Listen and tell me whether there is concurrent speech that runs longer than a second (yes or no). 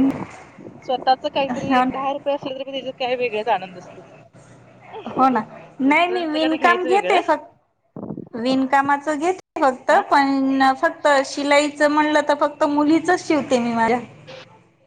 yes